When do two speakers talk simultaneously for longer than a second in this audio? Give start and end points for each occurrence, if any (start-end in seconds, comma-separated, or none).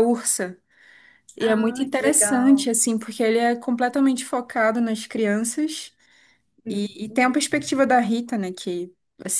1.4-2.7